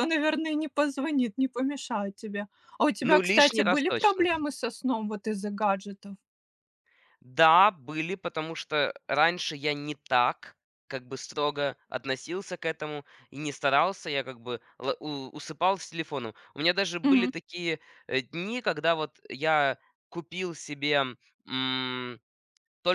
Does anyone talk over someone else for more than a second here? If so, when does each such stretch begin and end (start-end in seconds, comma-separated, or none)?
3.0-4.3